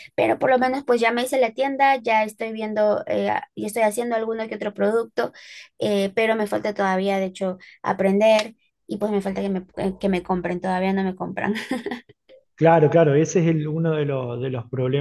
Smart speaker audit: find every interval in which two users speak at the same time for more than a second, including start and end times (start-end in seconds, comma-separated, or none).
none